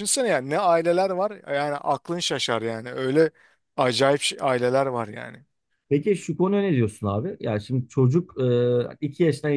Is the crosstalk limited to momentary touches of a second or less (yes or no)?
yes